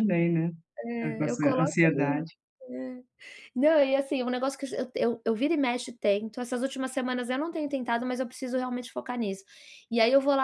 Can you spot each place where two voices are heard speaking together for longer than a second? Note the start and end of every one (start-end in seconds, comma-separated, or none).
1.0-2.3